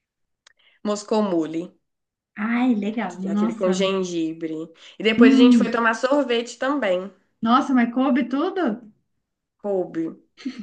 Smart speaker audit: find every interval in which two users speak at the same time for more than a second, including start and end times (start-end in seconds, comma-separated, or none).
none